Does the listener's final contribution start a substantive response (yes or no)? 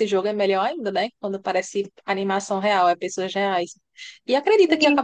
no